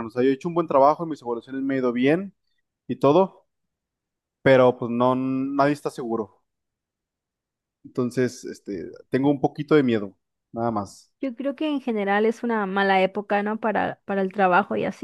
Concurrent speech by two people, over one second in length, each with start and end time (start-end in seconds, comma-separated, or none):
none